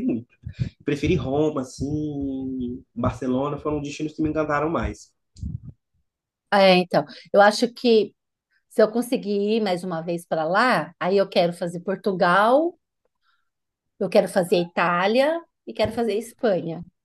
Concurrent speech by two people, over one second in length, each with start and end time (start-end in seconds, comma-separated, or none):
none